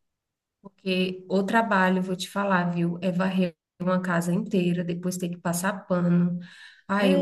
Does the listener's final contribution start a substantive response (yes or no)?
yes